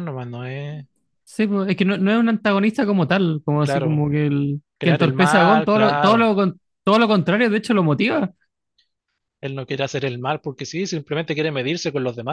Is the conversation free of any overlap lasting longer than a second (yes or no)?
no